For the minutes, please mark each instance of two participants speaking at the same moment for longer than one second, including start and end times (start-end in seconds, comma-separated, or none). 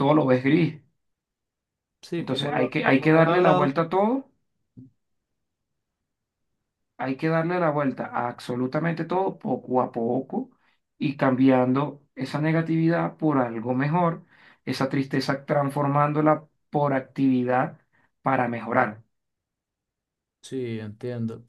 2.2-3.7